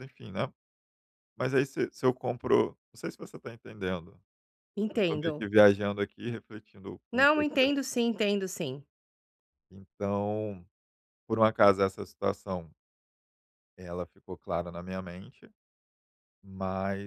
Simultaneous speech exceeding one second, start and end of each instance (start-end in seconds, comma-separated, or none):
none